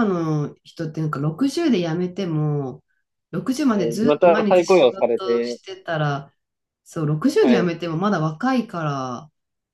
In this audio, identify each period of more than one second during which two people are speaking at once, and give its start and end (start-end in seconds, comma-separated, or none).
3.6-5.6